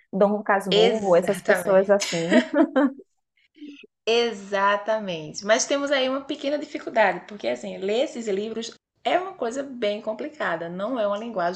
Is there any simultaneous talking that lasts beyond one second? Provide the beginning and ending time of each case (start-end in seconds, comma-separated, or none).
0.7-2.0